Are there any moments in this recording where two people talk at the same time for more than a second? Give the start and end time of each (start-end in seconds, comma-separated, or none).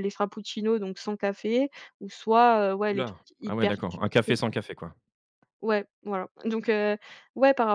2.9-4.4